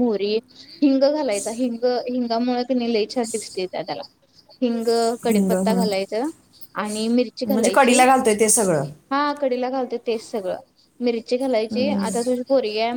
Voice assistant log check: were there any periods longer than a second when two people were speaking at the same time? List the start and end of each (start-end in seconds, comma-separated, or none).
none